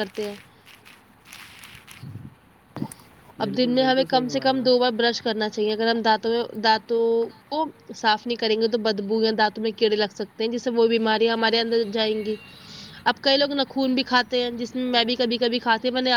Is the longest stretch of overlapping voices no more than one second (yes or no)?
no